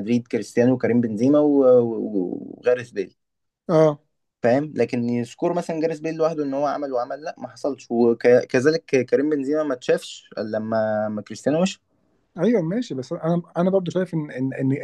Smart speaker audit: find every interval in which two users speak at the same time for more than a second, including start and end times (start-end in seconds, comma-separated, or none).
none